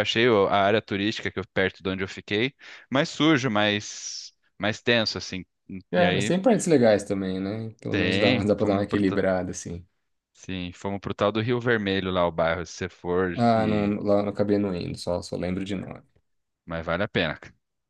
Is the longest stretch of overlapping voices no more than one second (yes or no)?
no